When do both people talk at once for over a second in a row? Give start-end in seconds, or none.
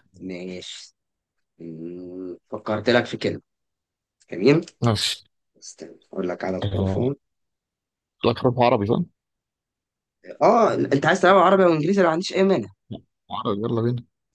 none